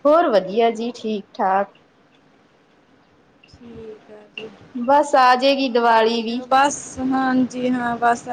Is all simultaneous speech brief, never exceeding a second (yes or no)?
yes